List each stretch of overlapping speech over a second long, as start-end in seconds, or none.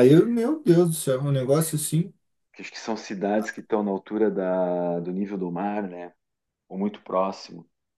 none